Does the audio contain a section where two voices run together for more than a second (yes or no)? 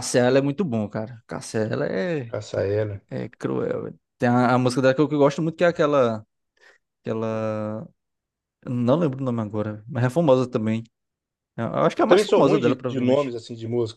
yes